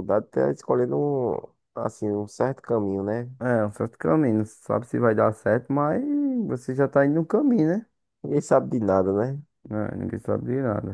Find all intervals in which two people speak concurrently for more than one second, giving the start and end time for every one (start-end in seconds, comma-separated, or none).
none